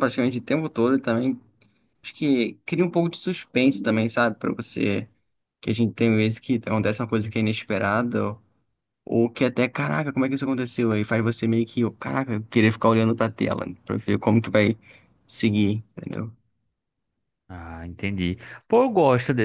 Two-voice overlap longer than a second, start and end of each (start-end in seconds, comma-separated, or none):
none